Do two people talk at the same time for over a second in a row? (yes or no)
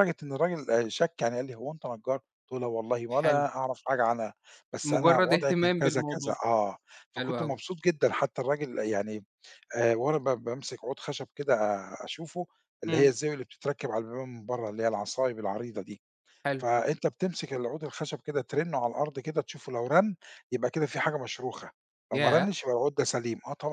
yes